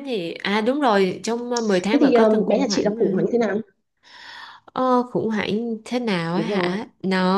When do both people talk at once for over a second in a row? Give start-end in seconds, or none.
1.9-3.3